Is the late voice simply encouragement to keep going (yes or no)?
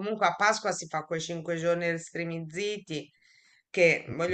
yes